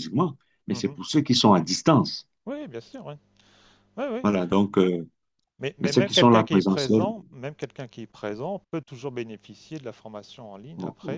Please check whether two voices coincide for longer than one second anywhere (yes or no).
yes